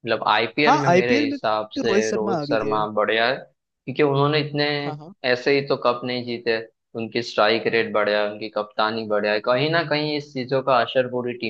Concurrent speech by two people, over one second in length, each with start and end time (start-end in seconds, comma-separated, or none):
0.6-2.8